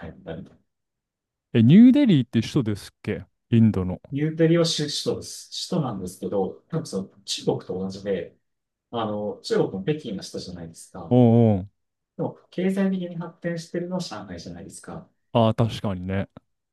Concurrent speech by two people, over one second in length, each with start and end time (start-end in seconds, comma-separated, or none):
none